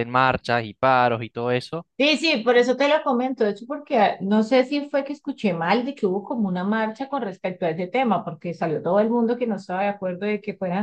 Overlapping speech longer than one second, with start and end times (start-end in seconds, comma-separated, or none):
none